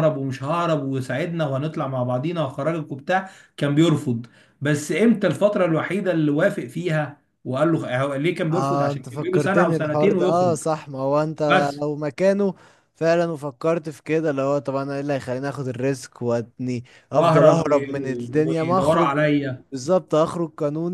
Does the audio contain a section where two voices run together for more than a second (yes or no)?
yes